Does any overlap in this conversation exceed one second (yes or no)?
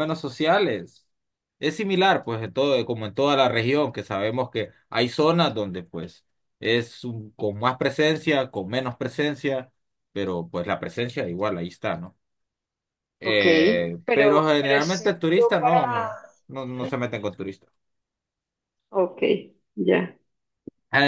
yes